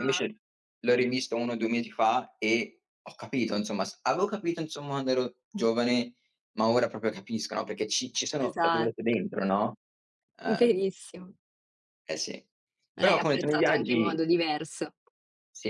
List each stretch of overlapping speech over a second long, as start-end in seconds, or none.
13.0-14.2